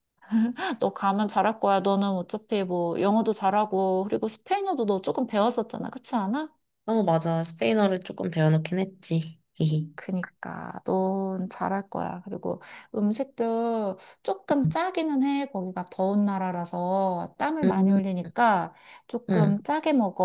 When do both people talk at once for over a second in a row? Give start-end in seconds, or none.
none